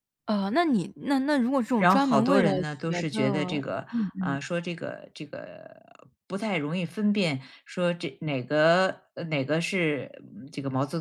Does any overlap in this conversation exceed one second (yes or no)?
yes